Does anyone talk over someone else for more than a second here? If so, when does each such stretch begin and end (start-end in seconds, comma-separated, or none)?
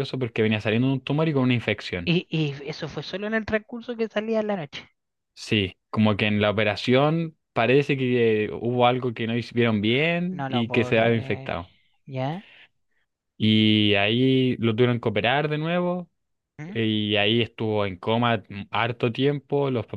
10.3-11.5